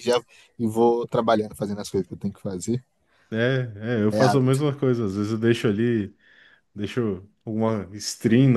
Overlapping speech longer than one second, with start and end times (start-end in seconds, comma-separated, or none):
none